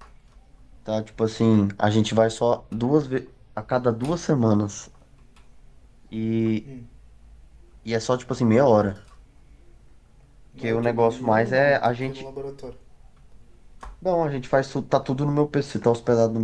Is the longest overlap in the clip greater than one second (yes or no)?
yes